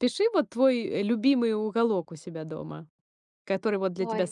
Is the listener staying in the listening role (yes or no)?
yes